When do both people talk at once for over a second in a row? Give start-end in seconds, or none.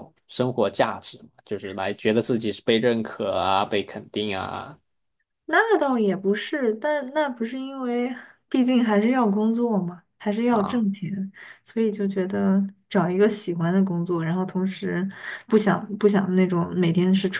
none